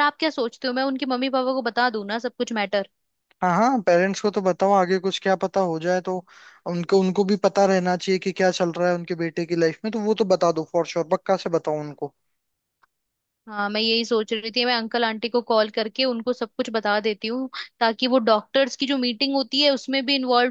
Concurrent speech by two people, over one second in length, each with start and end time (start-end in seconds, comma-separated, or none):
none